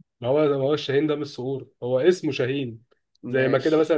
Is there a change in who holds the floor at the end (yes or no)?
no